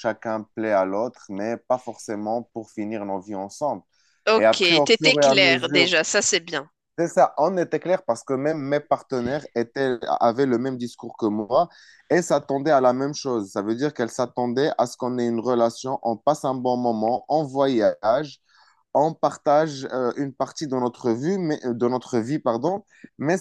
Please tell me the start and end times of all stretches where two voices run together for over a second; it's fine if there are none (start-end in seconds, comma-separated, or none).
4.3-5.9